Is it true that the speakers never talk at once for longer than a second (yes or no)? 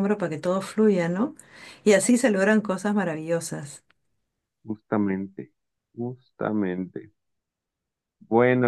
yes